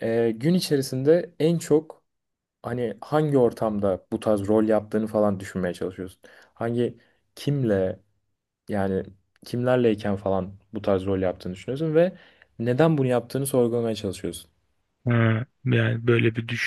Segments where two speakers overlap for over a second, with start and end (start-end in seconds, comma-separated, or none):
none